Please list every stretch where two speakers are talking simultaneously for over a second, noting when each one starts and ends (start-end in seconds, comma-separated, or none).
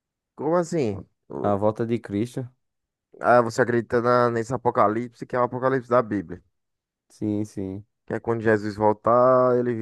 none